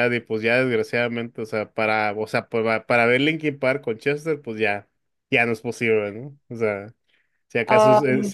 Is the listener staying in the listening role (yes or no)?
yes